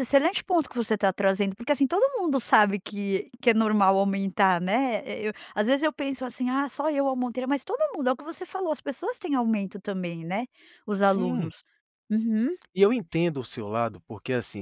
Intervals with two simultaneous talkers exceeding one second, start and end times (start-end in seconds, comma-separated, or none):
none